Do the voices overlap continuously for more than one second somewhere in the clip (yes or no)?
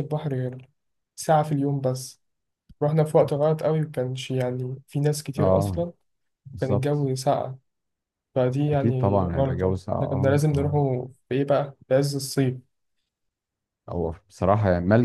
yes